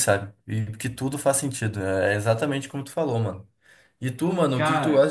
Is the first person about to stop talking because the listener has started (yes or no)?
no